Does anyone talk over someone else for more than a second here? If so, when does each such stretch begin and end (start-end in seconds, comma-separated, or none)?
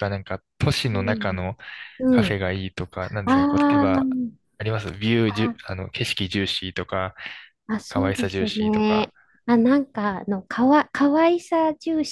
7.9-9.1